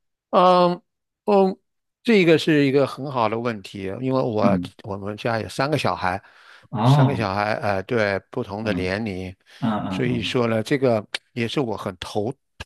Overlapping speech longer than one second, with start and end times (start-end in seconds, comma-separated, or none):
none